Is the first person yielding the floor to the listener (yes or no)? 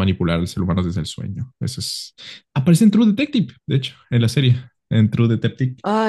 yes